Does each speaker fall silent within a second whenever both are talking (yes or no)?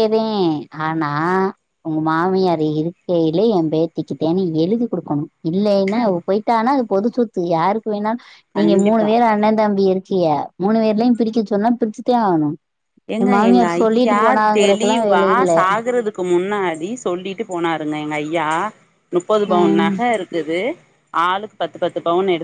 no